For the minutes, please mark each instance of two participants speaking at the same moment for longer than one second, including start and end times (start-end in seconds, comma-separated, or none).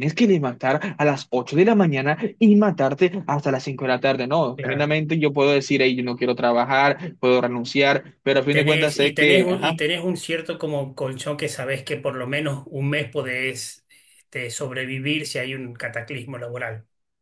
8.4-9.8